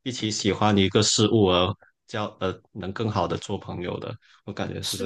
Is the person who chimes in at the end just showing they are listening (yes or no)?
no